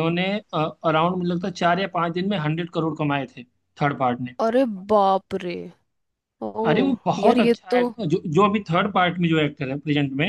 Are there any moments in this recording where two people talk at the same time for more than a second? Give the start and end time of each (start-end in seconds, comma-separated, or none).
none